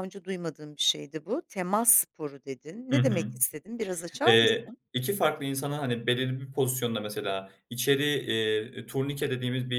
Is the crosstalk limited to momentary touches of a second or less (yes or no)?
yes